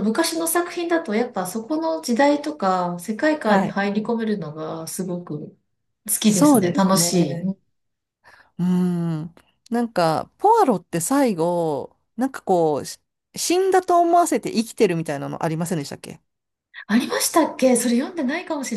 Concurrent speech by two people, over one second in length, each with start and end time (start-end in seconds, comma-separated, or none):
6.2-7.5